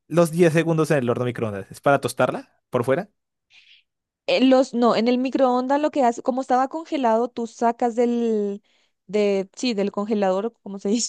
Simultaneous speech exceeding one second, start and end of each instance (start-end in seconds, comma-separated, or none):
none